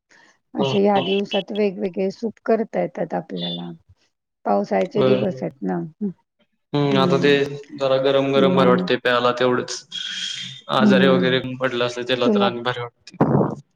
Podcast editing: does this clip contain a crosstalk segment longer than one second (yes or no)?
no